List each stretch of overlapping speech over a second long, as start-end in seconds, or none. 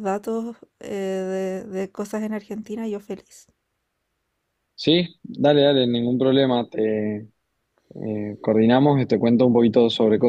none